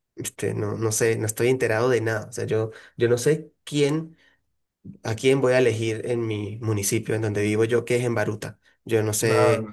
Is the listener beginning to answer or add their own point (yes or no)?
no